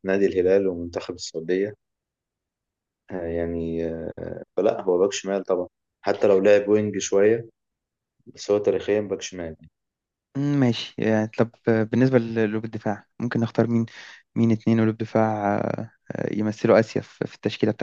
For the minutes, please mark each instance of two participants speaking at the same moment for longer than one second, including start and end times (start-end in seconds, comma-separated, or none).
none